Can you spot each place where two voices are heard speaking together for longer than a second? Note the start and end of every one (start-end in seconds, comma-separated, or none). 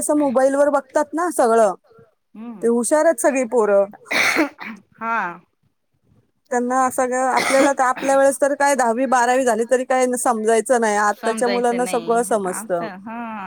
11.2-12.7